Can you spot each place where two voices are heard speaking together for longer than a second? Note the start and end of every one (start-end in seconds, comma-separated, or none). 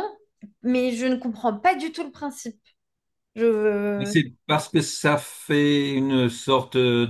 none